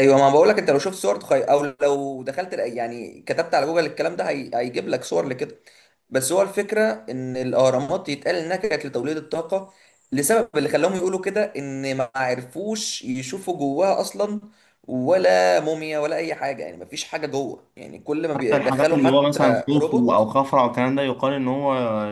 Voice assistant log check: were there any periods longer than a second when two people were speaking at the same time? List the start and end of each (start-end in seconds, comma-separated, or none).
18.3-20.3